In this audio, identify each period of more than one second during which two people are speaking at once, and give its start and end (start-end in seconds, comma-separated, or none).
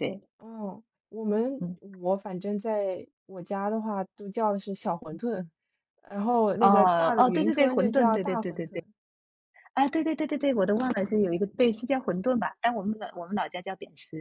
6.6-8.8